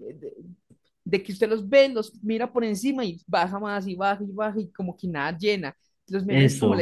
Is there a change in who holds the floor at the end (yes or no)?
no